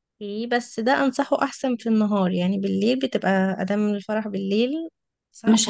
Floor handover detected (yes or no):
yes